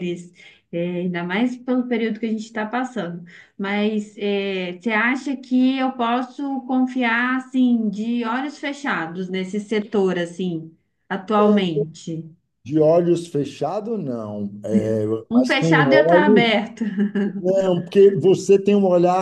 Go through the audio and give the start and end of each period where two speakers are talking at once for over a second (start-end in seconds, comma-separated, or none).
15.3-16.5